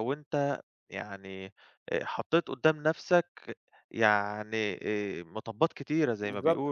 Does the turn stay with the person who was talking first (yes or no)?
no